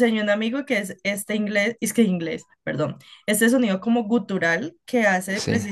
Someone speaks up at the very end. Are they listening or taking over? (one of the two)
listening